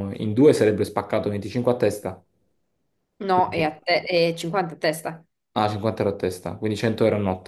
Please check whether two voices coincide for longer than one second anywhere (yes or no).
no